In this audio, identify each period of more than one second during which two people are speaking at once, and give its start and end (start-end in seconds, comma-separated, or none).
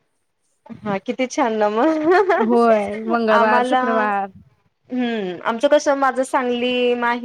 2.5-3.8